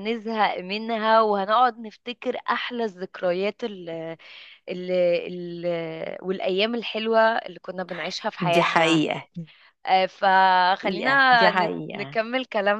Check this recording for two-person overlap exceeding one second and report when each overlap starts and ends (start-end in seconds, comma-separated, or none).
10.8-12.2